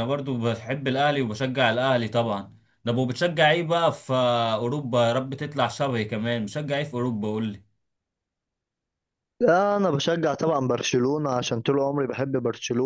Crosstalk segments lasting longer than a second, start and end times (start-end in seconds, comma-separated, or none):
none